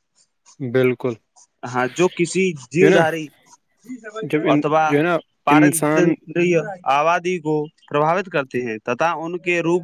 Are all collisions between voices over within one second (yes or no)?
yes